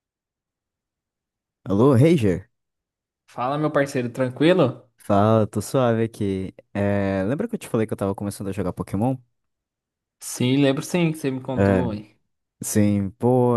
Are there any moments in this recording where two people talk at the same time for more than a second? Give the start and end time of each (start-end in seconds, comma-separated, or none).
none